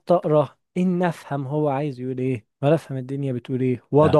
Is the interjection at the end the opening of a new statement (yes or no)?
no